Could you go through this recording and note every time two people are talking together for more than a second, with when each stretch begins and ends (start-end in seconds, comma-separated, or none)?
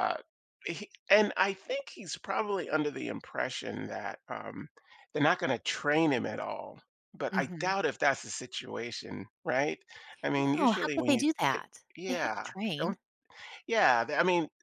10.4-13.0